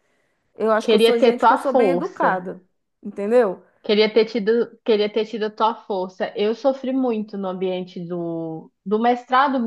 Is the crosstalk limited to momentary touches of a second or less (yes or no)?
no